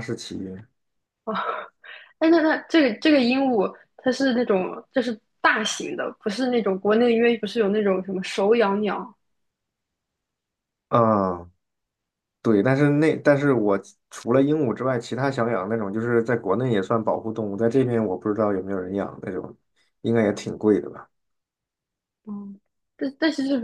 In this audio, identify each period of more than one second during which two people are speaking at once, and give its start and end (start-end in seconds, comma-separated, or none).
none